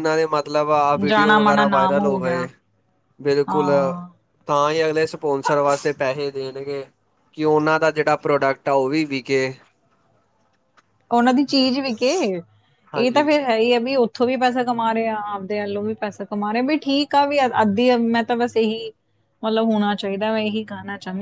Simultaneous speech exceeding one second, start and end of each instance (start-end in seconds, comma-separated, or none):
1.1-2.5